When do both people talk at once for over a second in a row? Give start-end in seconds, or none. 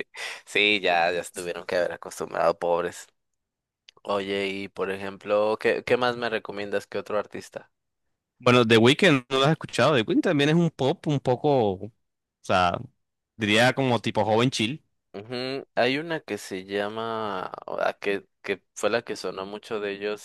none